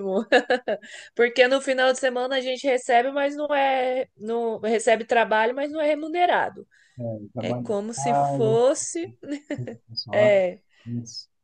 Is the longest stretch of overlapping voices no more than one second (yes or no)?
no